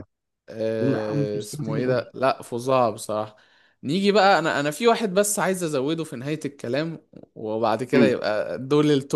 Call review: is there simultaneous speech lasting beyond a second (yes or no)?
yes